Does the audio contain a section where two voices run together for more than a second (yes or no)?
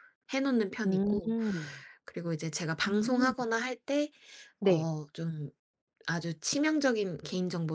no